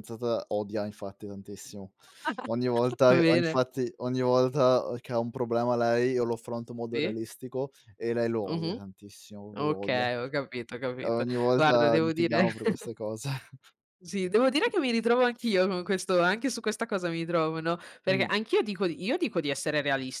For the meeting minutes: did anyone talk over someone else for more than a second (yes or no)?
yes